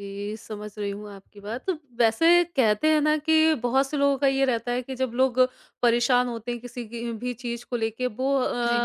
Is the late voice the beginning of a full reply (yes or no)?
no